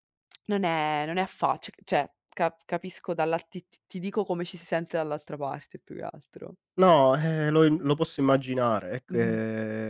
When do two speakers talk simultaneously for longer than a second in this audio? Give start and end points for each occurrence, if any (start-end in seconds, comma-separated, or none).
none